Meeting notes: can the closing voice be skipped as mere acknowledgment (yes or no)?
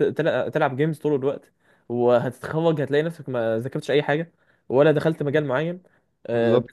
yes